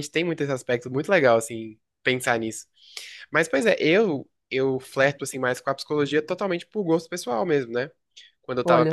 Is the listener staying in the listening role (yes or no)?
yes